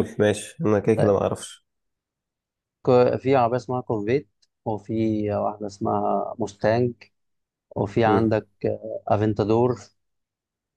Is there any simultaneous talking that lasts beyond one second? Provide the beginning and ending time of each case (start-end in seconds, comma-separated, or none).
none